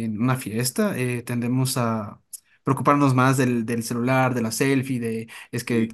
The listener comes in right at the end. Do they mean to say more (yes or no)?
no